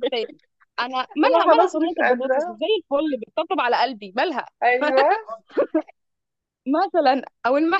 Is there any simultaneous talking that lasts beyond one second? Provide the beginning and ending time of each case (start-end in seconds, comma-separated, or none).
1.2-2.6